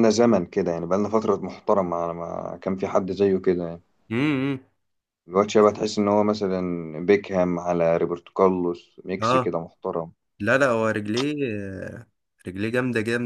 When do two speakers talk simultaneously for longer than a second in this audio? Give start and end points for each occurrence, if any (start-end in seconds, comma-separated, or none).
none